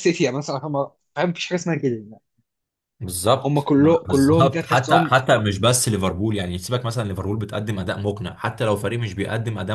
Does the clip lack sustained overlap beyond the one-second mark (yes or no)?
no